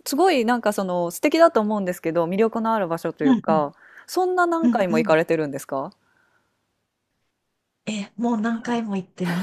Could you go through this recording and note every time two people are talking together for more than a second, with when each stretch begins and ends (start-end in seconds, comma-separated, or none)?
none